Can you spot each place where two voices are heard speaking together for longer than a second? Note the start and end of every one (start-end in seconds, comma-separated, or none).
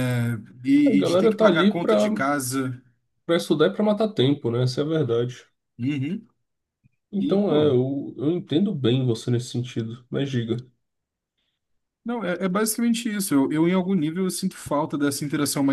0.9-2.1